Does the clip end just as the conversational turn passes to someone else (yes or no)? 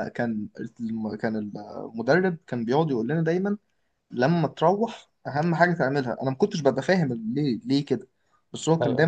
no